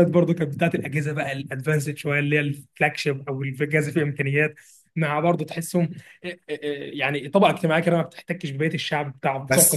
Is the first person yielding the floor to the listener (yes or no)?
yes